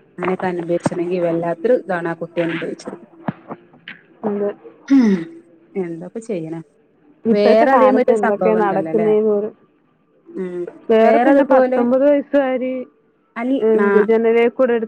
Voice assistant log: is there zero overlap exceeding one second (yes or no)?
no